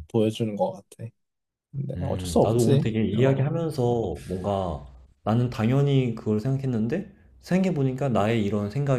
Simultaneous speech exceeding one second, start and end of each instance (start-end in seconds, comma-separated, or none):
2.0-3.5